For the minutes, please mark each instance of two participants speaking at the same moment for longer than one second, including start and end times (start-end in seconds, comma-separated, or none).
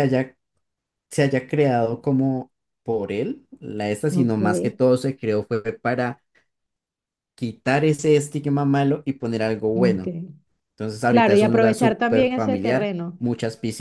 11.1-13.2